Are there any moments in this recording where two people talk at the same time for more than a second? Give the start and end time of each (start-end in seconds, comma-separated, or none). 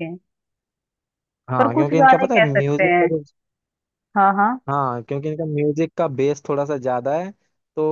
1.6-3.1